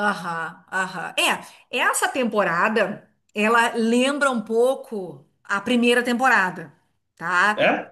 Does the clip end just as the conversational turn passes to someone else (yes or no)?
no